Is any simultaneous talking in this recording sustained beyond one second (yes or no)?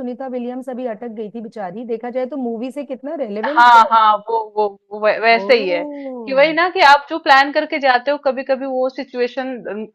no